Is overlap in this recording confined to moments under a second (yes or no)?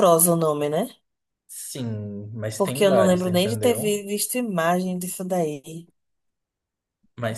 no